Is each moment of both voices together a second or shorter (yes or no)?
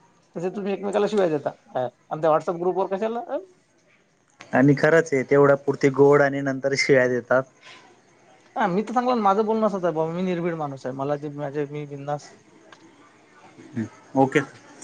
yes